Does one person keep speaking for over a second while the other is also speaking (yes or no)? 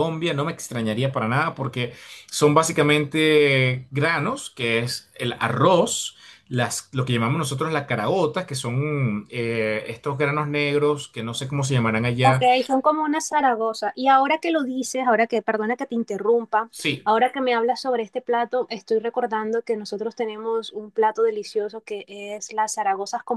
no